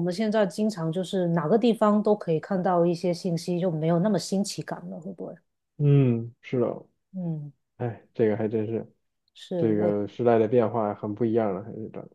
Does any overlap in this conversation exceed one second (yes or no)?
no